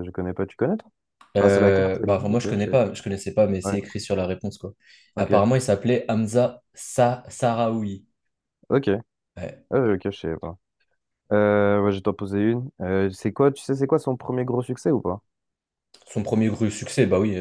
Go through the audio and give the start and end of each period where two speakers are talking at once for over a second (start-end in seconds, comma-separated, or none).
1.4-2.8